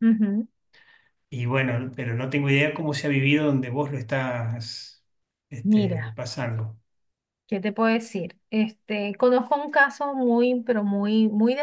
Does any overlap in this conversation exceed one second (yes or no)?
no